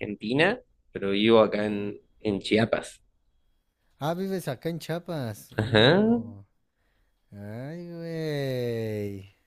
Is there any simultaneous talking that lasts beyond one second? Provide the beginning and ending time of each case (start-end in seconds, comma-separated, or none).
none